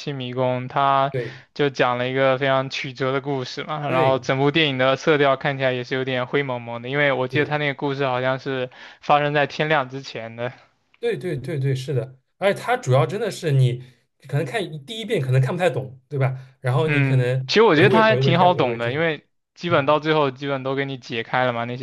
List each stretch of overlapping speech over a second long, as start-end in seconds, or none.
16.8-19.0